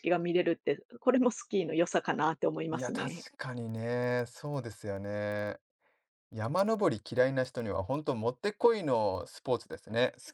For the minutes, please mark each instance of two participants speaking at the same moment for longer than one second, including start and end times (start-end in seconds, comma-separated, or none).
none